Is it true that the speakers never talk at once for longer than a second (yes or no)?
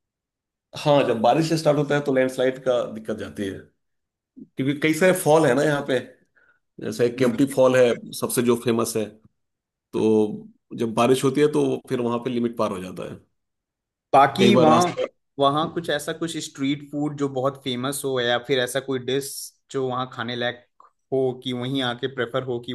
yes